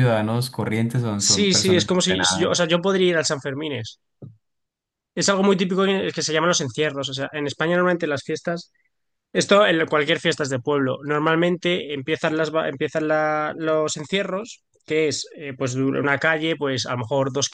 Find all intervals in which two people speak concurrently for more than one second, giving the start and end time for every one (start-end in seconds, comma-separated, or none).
1.2-2.5